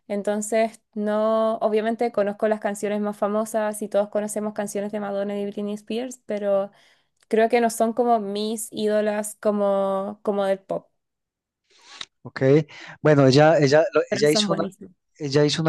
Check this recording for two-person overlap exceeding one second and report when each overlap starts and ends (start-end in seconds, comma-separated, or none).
none